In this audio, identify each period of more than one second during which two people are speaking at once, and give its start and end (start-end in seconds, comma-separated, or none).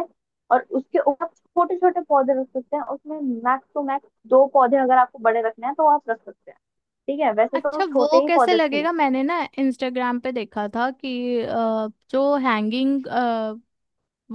7.6-9.0